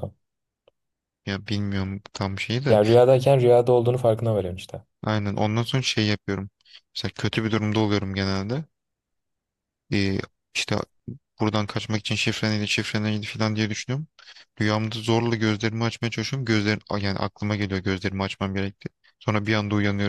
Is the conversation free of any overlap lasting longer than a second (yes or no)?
yes